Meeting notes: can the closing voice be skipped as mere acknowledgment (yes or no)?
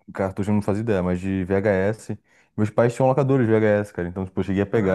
yes